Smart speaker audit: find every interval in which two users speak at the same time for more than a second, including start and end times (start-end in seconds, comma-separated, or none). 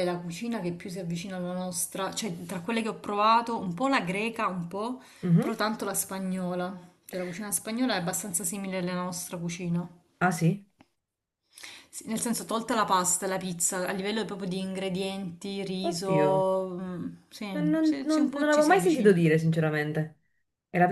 17.5-19.2